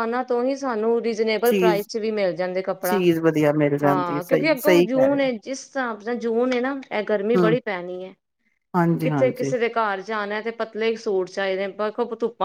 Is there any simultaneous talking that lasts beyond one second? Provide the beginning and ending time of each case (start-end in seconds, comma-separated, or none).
3.8-5.2